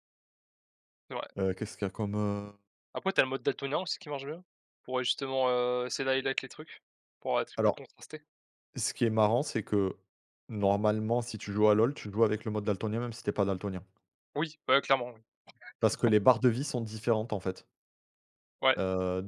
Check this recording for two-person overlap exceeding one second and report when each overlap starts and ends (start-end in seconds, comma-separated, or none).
none